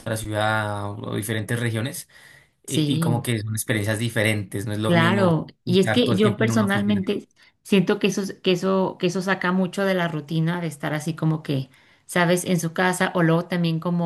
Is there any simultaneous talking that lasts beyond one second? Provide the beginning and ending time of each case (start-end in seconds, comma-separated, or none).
4.9-7.0